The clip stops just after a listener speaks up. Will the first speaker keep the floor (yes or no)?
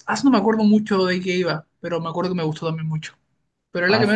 no